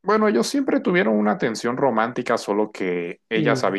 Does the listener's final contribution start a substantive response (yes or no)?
no